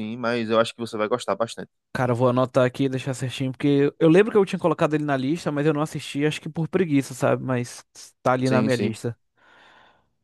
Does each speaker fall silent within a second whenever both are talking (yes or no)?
yes